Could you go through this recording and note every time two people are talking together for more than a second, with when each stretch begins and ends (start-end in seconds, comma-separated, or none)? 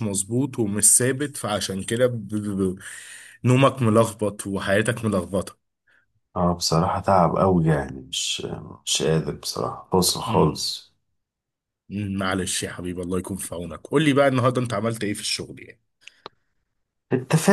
none